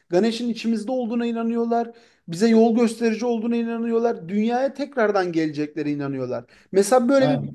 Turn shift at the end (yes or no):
no